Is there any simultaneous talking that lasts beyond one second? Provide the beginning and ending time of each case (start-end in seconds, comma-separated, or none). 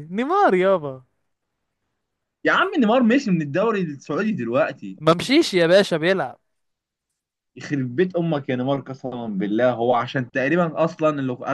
none